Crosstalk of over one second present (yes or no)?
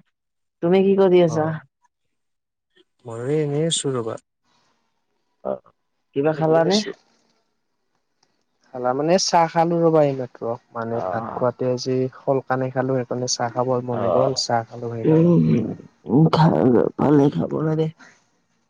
no